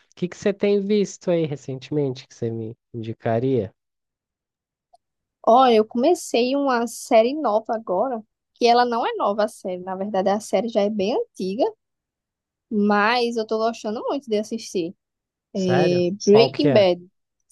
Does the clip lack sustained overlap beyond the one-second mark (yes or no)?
no